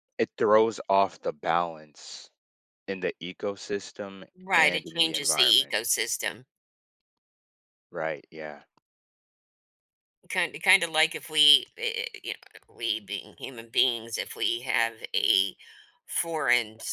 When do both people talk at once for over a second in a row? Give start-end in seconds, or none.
4.4-5.8